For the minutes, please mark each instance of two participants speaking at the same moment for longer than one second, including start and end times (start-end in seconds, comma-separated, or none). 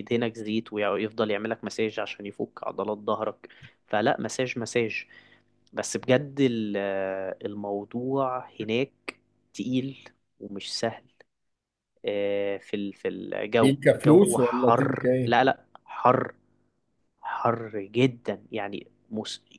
13.6-15.4